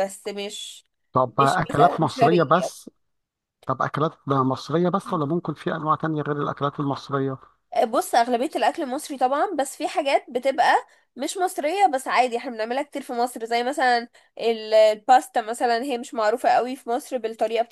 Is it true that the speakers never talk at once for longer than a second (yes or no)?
no